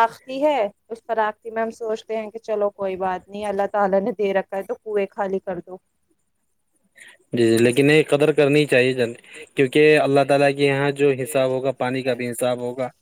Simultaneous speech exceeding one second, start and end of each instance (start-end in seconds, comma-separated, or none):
none